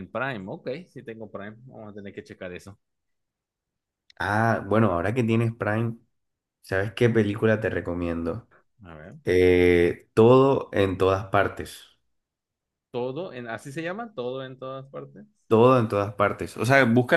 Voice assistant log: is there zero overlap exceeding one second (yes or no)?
yes